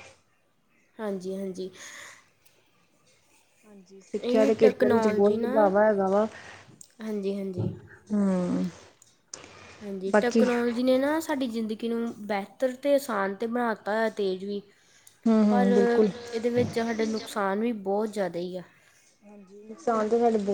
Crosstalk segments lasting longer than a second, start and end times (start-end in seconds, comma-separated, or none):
4.2-5.5